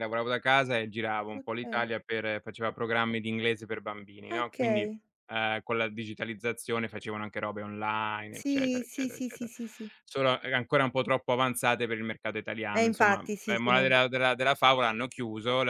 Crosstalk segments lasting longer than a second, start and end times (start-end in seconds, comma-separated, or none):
8.3-9.5, 12.7-13.9